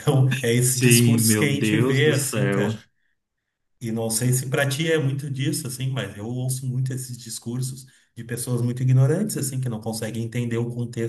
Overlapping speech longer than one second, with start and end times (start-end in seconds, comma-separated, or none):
0.6-2.7